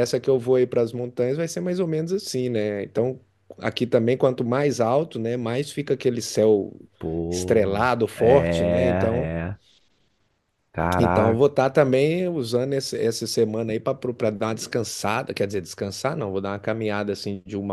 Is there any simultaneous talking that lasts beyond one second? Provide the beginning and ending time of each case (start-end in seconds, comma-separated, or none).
7.3-9.3